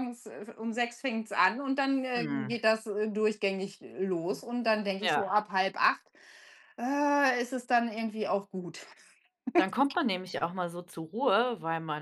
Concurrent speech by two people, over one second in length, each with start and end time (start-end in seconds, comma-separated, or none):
none